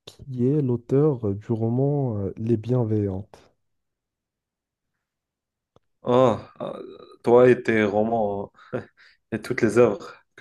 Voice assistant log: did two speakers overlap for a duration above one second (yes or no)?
no